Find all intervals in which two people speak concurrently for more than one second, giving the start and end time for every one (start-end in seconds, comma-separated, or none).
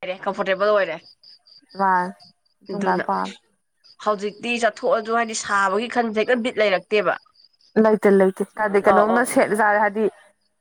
none